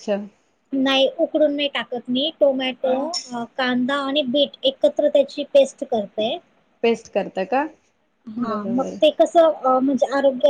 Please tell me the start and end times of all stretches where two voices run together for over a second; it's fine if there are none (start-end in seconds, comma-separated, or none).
none